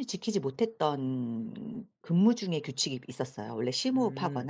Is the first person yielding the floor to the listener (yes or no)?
no